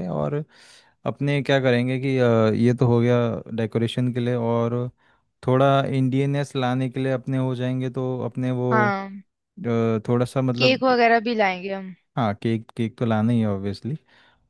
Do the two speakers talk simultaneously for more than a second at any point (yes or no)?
no